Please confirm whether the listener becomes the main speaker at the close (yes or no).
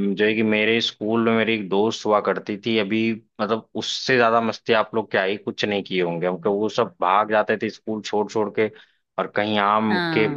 no